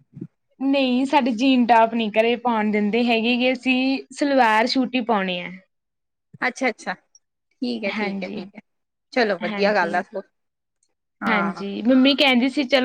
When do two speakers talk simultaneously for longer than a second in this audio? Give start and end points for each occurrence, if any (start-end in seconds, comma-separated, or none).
none